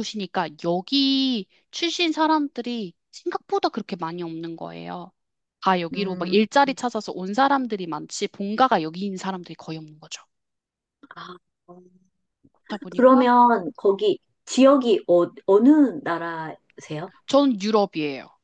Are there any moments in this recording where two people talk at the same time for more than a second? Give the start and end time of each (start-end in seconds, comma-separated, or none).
none